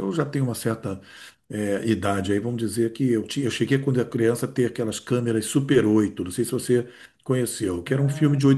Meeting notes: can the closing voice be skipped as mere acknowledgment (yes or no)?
yes